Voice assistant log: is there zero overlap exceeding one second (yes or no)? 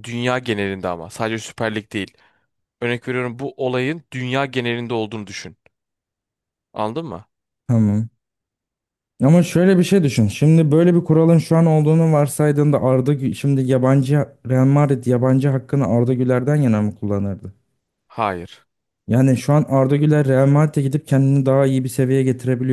yes